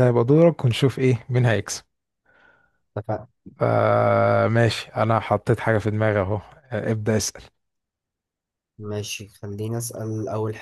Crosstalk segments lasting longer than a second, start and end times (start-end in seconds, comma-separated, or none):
none